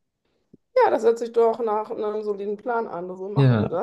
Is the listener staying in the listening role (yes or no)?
no